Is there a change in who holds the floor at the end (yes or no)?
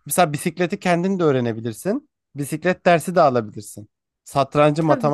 no